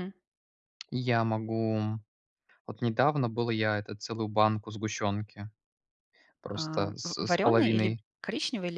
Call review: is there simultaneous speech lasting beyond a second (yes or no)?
yes